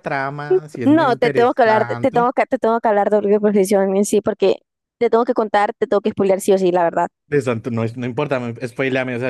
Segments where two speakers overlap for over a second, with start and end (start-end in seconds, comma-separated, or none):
0.8-2.3